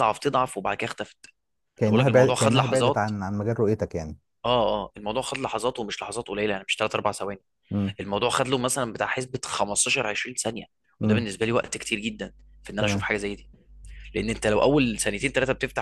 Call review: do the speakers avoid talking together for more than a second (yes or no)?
no